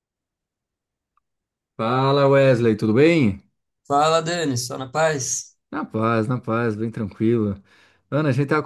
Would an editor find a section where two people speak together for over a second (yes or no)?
no